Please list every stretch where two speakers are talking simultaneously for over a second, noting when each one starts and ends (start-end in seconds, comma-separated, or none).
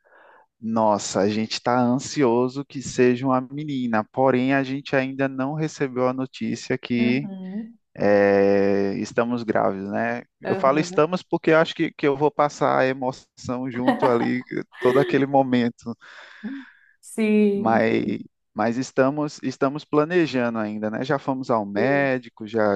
none